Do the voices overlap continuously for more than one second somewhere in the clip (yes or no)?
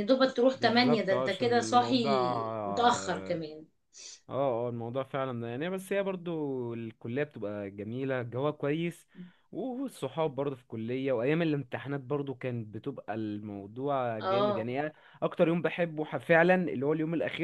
yes